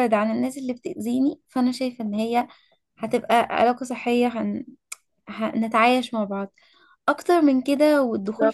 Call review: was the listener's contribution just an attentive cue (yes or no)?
yes